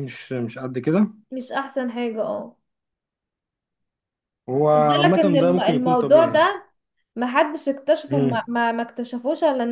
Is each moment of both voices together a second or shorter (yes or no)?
no